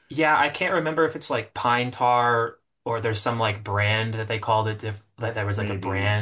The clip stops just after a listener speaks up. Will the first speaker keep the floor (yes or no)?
yes